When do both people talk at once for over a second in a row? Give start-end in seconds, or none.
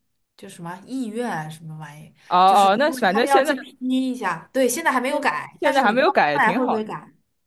2.3-3.5, 5.1-6.9